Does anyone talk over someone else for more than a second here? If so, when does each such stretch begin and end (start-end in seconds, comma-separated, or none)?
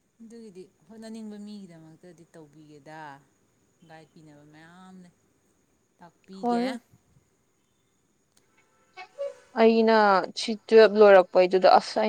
none